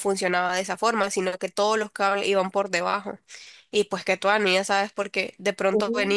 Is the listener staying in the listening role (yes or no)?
yes